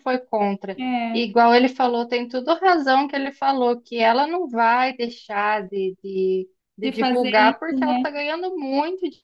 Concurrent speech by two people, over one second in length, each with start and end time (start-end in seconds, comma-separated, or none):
6.8-8.1